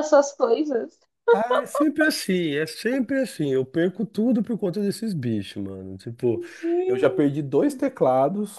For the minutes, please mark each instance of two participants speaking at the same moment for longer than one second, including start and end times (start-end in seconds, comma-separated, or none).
none